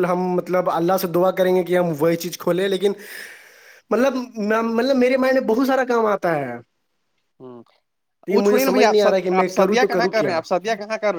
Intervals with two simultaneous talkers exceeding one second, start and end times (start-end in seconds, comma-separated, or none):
8.3-10.4